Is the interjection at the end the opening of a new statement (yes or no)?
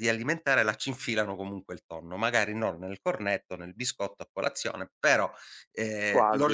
no